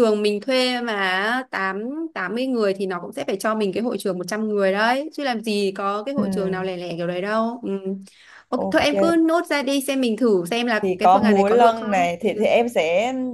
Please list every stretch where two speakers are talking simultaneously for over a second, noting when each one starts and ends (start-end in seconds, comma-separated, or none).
10.8-12.1